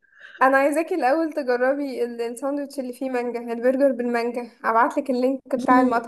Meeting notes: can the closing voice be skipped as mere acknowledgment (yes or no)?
no